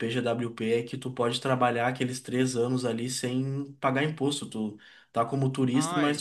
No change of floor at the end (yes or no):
yes